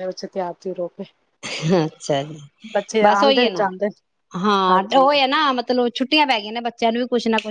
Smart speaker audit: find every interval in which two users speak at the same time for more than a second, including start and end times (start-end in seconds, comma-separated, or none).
none